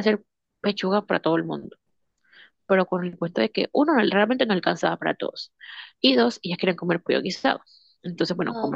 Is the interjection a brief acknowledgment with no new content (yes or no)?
yes